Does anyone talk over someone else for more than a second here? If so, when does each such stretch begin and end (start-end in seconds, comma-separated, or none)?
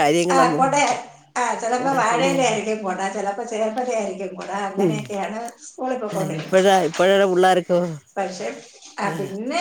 none